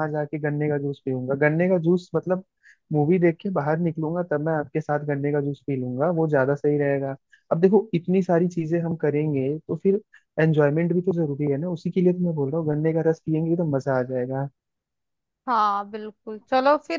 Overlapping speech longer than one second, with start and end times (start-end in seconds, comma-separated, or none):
none